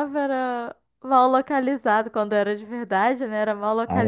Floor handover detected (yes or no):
yes